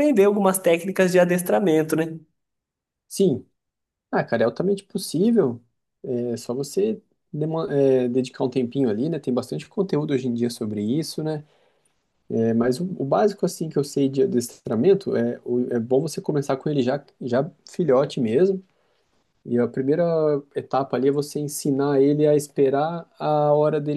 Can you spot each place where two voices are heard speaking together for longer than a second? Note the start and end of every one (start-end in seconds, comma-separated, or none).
none